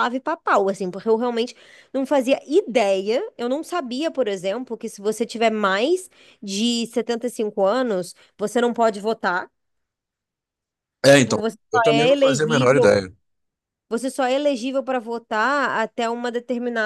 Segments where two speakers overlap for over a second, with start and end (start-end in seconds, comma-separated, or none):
11.1-13.0